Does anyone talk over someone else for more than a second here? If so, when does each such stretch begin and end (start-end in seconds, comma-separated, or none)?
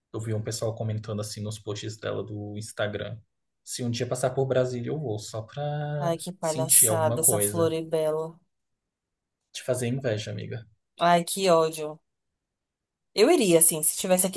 6.0-7.7